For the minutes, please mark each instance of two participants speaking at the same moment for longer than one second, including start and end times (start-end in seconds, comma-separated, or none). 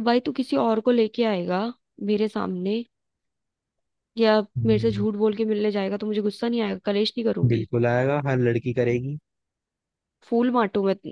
none